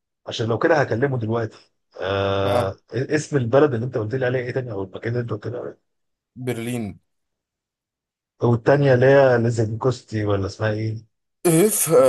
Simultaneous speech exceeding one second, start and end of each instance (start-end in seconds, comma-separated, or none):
none